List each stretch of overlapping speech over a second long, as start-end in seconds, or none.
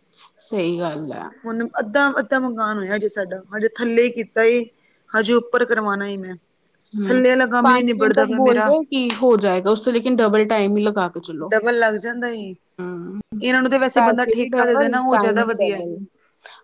13.9-15.8